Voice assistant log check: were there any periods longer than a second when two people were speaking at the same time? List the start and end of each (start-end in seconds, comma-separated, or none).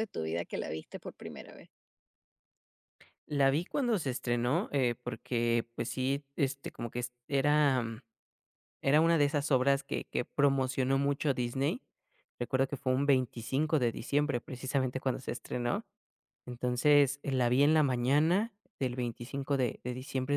none